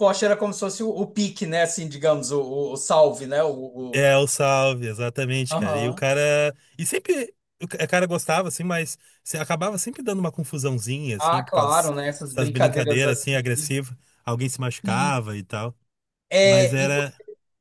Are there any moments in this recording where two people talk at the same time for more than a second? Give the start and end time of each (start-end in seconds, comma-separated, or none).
11.2-13.4